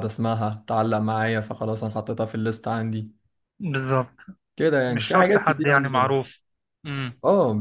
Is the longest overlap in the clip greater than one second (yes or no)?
yes